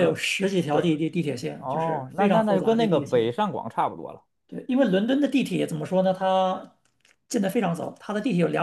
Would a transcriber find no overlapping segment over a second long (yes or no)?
no